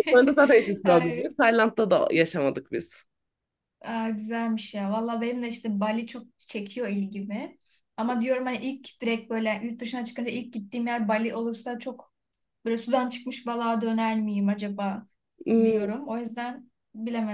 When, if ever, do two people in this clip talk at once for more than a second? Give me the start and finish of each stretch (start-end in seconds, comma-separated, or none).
none